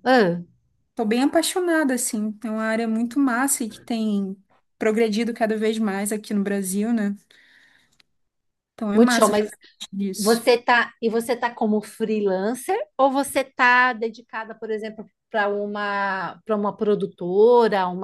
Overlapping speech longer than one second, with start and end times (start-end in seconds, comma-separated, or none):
none